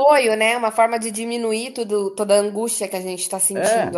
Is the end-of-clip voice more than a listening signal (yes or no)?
yes